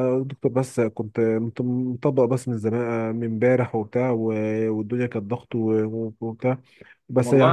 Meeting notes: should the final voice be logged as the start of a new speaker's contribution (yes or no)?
no